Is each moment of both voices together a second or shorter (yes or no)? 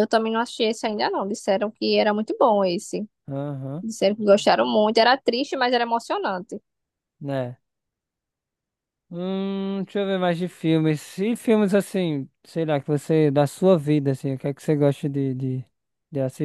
yes